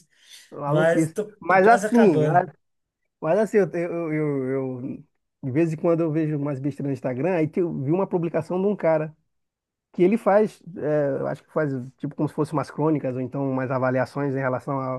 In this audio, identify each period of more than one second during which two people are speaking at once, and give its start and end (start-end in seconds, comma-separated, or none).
0.7-2.5